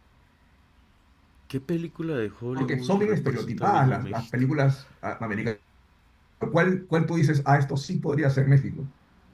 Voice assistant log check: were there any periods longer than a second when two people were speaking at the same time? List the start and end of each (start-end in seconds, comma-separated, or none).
2.5-4.5